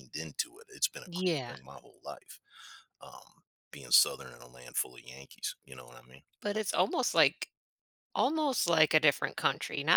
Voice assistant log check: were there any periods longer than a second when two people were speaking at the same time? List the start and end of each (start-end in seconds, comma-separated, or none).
none